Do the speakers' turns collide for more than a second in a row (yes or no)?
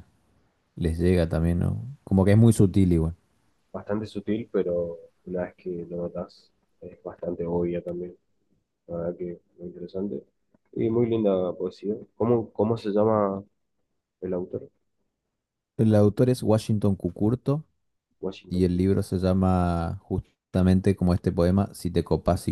no